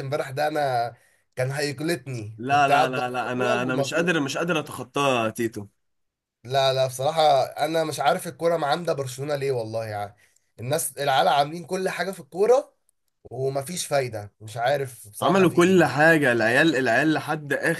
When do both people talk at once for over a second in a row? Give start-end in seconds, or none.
2.4-4.2